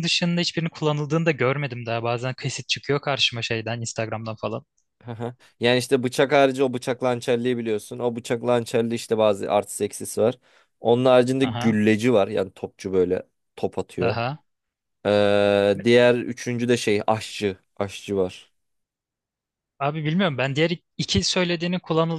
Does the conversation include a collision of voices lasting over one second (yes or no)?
no